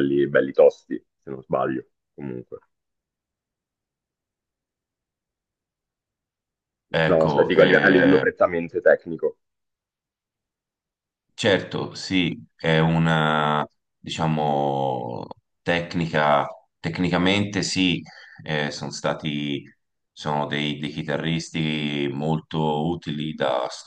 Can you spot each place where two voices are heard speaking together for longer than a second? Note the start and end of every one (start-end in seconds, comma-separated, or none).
7.1-8.3